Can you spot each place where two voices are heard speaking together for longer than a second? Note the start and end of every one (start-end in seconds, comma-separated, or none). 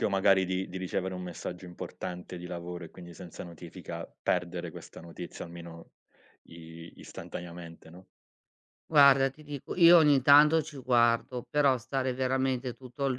none